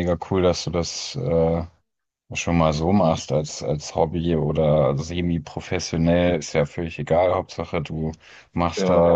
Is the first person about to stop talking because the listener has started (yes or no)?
no